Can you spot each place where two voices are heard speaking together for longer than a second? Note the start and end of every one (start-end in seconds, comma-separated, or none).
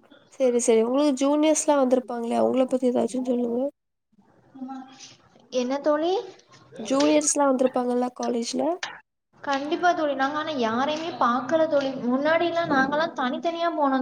none